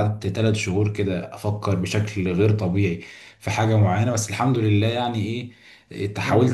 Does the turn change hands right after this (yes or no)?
no